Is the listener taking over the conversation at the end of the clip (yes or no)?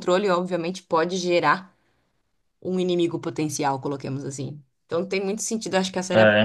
no